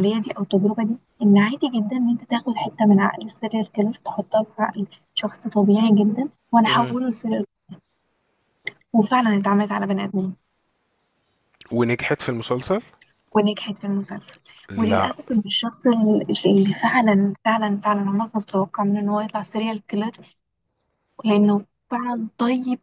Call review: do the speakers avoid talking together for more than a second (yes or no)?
yes